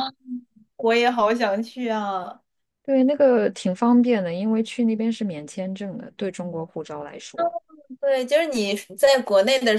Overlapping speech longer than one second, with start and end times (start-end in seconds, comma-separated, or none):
none